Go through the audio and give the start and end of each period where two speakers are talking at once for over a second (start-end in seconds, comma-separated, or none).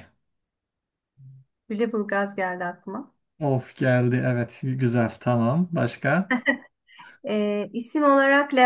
none